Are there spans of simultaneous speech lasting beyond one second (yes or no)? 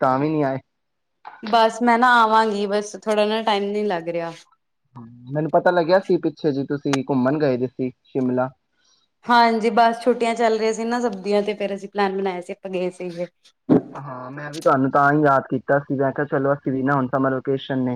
no